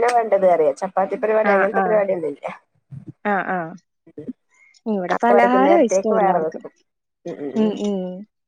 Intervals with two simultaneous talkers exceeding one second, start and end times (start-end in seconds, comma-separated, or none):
5.2-6.6